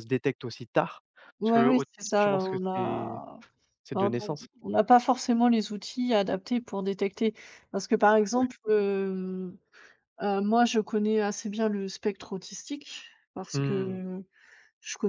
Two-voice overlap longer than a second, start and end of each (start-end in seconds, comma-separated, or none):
1.4-3.2